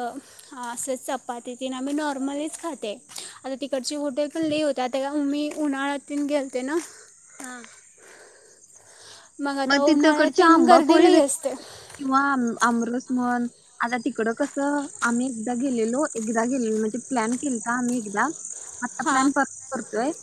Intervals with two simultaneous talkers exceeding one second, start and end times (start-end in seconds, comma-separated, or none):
9.7-11.5